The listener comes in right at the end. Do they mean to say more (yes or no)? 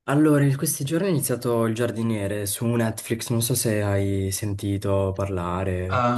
yes